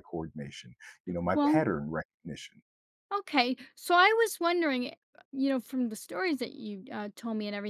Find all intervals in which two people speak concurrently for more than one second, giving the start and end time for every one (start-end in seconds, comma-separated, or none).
none